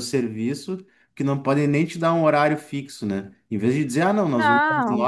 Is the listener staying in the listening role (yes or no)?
yes